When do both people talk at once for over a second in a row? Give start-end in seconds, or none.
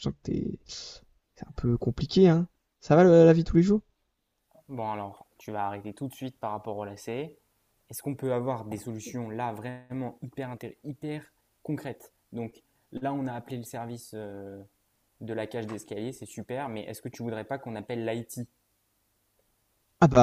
none